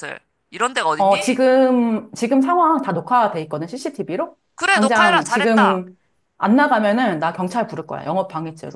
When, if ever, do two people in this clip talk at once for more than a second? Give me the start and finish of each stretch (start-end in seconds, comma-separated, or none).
4.5-5.8